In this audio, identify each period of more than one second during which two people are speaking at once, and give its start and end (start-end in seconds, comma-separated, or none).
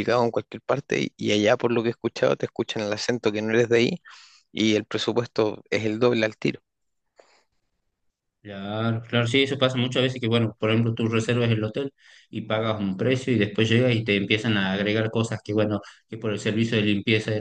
none